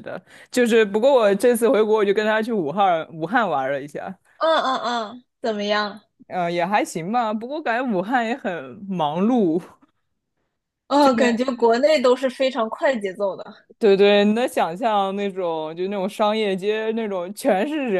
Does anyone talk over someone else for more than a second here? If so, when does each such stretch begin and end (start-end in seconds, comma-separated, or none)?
none